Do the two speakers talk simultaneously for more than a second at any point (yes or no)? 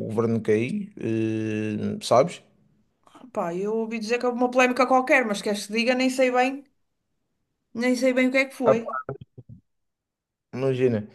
no